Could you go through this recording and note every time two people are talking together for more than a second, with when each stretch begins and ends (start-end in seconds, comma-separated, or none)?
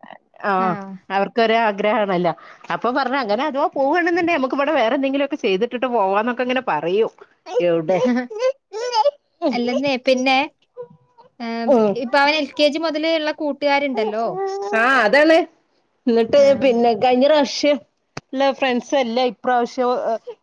none